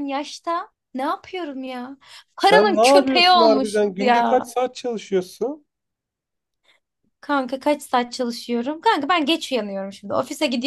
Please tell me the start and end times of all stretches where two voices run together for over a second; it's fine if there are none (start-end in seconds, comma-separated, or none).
2.4-4.5